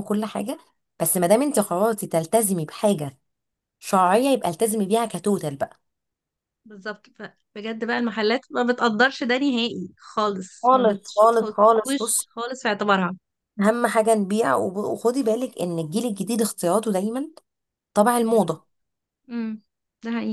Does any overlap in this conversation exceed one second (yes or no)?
yes